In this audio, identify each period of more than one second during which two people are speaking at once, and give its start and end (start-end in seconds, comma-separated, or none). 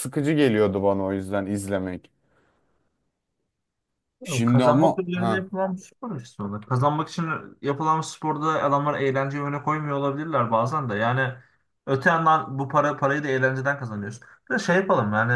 4.2-5.5